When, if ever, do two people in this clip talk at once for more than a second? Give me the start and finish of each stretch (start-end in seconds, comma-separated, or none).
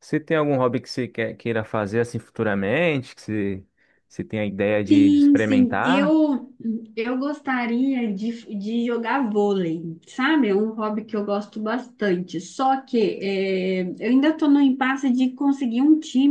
4.9-6.2